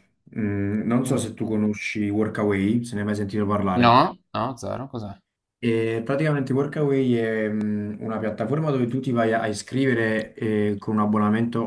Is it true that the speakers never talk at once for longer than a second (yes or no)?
yes